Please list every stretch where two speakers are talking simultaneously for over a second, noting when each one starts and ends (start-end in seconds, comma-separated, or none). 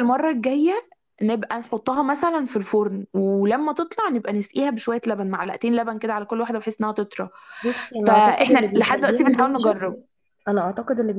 8.0-9.8